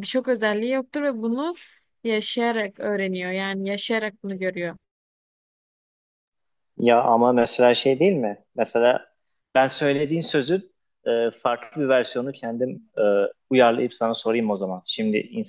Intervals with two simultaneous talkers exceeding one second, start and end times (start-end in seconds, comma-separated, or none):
none